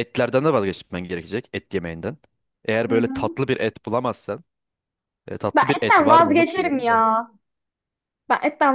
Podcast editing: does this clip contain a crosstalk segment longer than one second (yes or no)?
yes